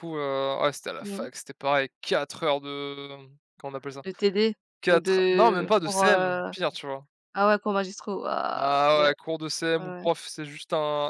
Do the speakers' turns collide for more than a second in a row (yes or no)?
yes